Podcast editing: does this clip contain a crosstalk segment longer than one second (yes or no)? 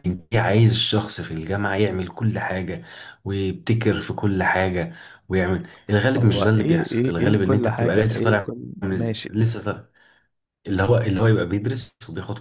yes